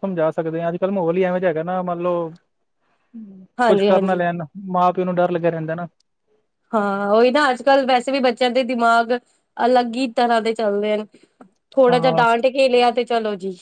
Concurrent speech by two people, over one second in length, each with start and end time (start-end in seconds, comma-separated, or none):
none